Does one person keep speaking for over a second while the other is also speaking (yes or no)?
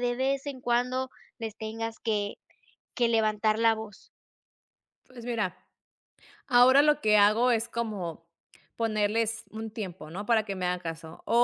no